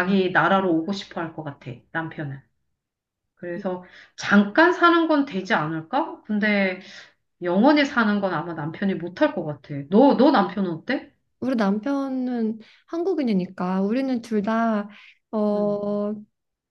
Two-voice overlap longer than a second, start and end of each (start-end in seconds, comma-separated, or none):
none